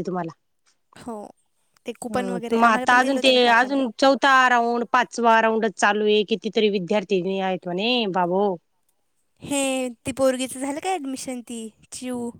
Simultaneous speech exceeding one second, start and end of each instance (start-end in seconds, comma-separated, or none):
2.1-3.8